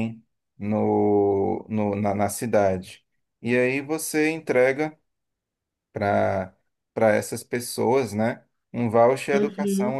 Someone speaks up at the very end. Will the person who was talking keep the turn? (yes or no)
yes